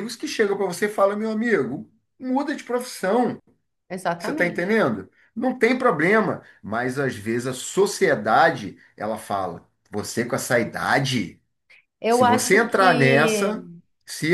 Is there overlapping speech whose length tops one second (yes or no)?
yes